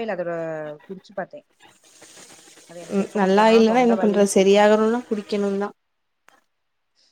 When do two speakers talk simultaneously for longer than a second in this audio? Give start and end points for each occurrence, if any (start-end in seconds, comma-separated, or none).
3.0-5.0